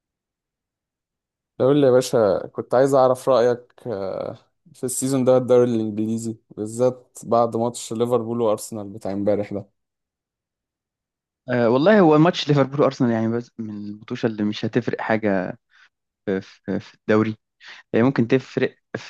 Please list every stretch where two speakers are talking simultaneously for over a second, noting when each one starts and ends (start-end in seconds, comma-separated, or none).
none